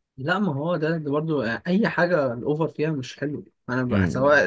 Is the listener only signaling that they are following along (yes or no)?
yes